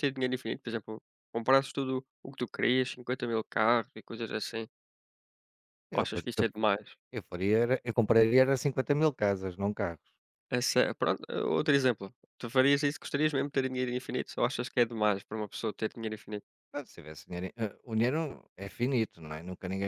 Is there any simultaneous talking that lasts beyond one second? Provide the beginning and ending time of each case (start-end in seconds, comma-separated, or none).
none